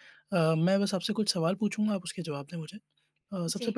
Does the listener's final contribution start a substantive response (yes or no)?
no